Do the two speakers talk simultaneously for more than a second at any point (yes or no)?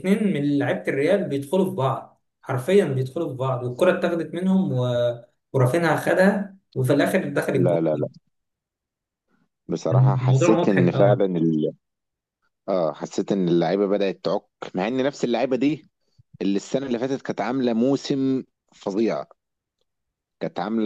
yes